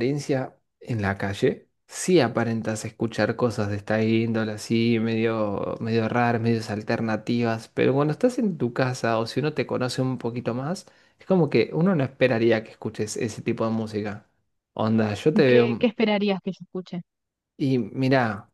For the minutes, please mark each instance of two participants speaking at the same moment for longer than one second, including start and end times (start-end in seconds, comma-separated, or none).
none